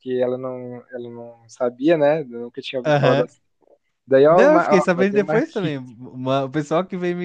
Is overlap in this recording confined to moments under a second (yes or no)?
no